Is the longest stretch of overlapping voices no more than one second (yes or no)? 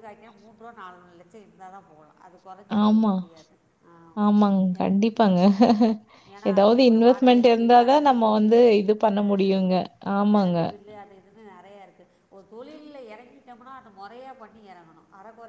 no